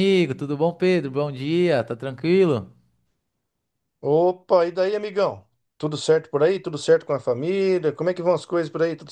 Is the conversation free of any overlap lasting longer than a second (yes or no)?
yes